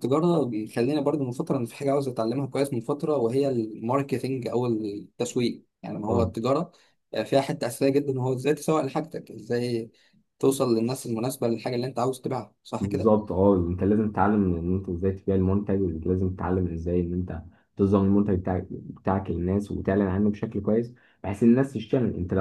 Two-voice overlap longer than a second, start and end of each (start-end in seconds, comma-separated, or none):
none